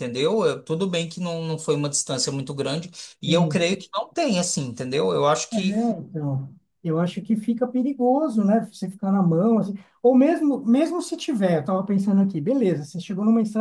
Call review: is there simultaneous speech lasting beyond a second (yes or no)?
no